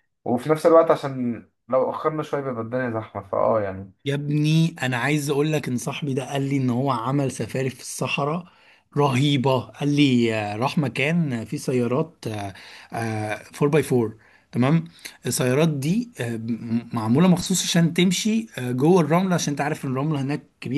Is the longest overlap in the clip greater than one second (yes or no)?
no